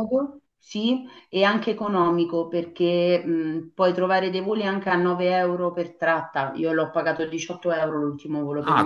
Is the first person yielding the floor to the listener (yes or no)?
yes